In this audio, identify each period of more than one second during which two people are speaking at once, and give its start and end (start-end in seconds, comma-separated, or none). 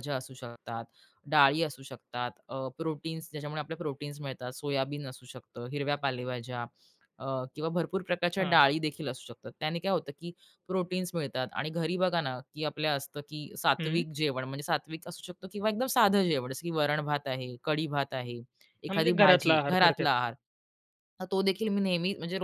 18.9-20.3